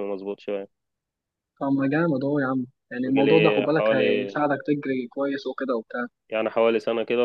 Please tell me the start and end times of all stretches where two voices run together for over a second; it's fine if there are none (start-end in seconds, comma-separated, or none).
3.0-4.4